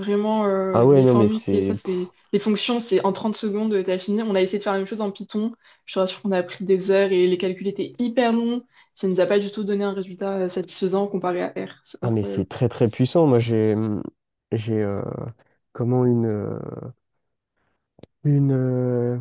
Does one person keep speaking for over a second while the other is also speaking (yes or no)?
yes